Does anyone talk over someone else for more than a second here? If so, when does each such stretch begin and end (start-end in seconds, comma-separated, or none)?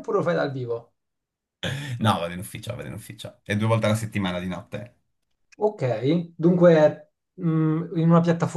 none